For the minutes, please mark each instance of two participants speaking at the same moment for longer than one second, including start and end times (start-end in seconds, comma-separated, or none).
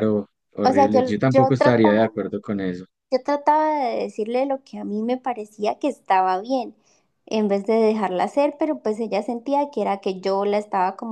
0.6-2.1